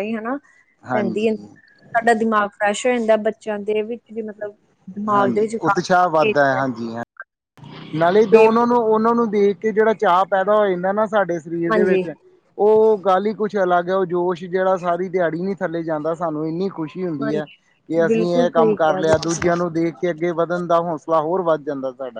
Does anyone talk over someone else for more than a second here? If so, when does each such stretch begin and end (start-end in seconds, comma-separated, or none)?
5.1-6.3, 18.1-19.5